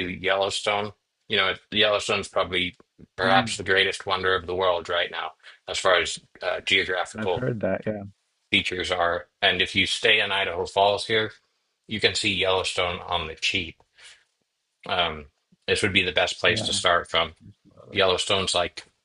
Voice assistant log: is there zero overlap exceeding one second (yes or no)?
yes